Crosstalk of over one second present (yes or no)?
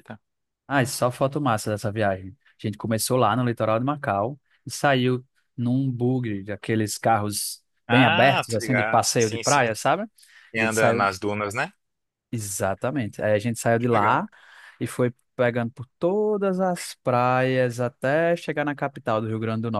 yes